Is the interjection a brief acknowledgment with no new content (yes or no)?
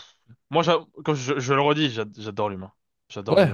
no